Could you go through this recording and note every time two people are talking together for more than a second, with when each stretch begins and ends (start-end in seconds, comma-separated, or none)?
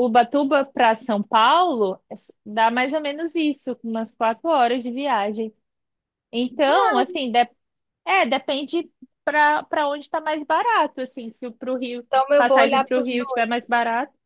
12.1-13.6